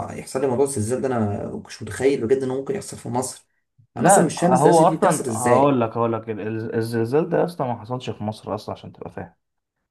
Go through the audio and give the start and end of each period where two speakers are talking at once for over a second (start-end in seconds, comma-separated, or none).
4.0-5.8